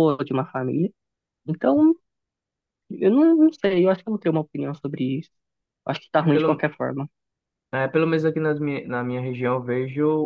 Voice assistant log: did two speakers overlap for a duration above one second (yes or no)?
no